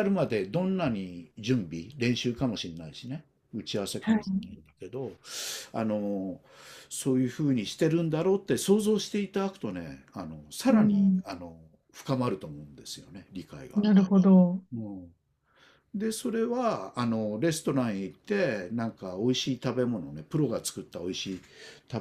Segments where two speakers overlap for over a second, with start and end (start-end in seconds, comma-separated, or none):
none